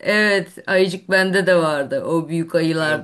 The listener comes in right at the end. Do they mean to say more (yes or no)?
no